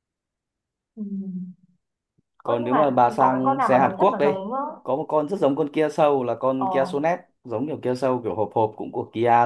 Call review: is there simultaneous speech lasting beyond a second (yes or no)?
yes